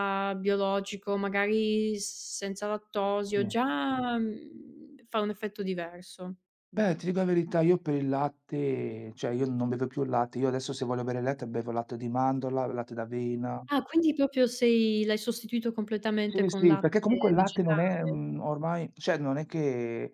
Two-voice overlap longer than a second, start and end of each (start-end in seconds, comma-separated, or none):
16.3-17.8